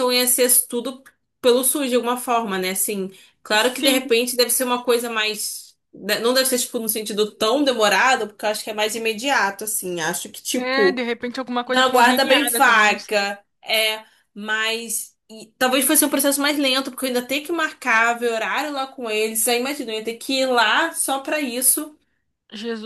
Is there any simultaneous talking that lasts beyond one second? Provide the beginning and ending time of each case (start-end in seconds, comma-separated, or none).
11.7-13.3